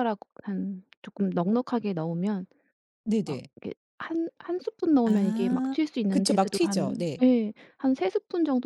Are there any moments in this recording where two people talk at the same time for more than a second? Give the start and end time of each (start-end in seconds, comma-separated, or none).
5.0-7.2